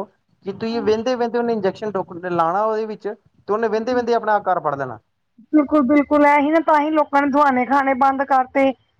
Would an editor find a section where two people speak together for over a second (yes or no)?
no